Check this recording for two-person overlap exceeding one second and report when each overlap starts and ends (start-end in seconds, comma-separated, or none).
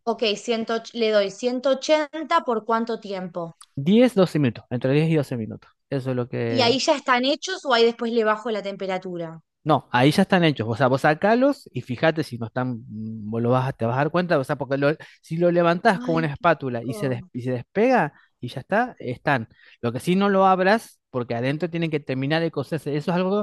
16.0-17.3